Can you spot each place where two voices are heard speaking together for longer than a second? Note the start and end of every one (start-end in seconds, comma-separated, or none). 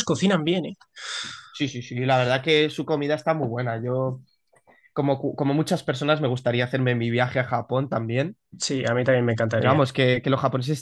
none